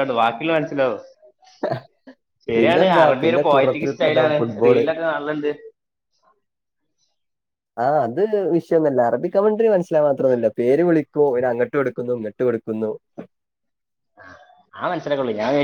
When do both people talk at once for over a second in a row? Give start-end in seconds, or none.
2.6-4.8